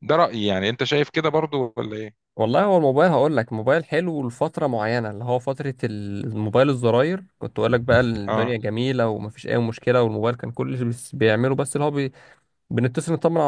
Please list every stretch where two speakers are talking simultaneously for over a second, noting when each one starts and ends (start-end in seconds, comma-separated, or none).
none